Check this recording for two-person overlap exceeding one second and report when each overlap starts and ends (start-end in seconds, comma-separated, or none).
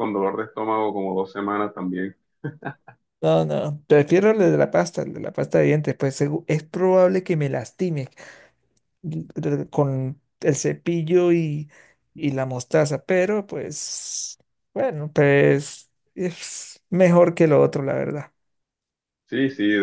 none